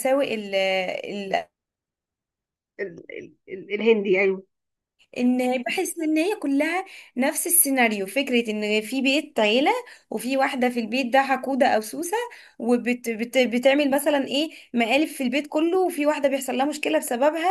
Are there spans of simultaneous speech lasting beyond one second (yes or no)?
no